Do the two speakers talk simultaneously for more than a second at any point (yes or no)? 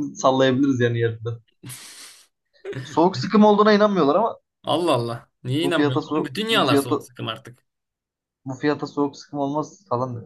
yes